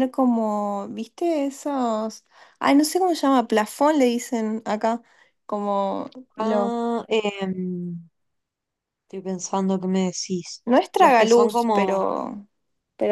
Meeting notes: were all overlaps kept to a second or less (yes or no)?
no